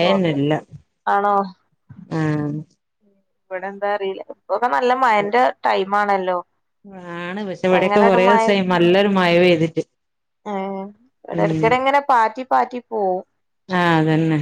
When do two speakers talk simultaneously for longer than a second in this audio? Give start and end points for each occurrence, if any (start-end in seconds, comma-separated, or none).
none